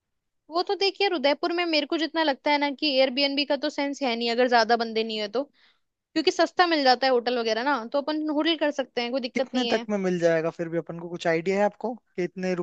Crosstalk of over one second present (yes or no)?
no